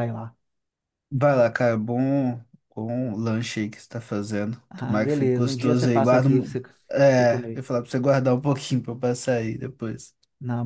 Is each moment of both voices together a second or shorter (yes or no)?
no